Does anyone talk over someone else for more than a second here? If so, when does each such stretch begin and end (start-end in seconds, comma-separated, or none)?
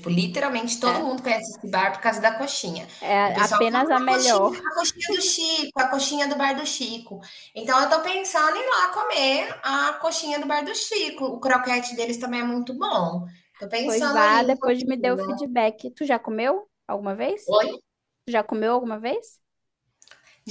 3.2-4.6, 13.8-15.4